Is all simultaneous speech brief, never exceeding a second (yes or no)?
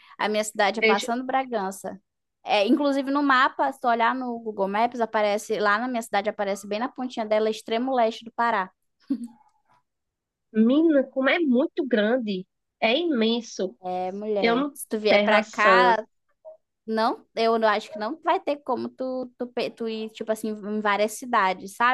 no